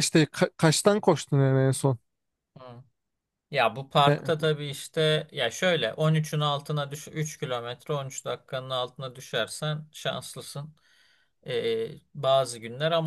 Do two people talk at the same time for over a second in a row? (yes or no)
no